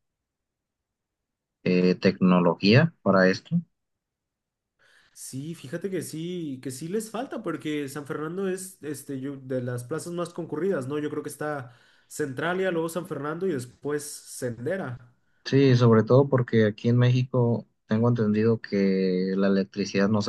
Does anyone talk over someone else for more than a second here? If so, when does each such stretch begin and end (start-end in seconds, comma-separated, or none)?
none